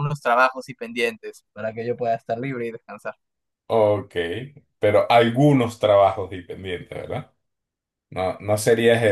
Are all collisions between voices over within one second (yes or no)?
yes